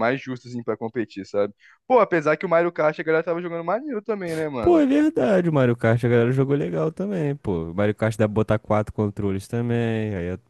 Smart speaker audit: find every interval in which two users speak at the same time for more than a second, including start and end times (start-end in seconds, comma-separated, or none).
none